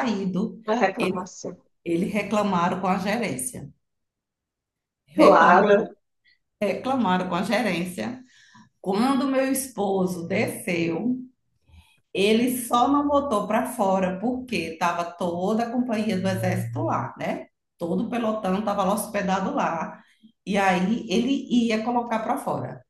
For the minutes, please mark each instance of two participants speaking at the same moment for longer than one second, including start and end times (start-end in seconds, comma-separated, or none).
none